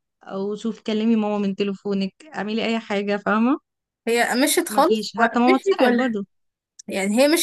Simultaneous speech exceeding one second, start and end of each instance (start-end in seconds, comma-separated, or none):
4.7-6.2